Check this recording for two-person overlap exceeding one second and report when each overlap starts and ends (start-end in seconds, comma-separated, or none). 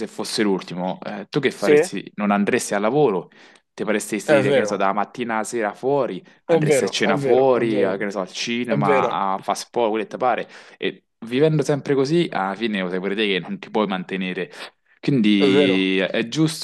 6.5-8.0